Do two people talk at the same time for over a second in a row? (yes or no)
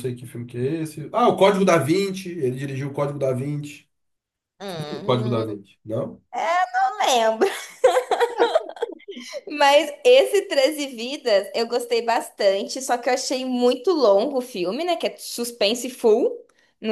no